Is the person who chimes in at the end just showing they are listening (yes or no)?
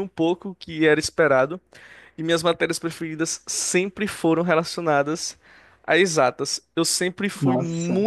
yes